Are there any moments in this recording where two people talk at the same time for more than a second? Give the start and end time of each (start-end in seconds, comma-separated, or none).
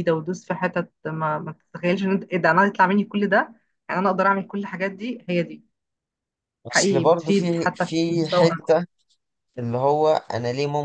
6.7-8.5